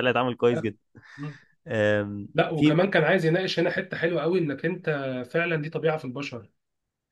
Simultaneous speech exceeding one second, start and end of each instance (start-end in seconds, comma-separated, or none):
none